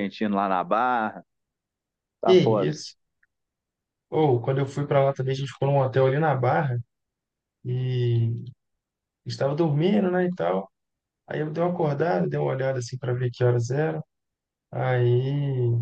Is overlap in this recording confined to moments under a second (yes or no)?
yes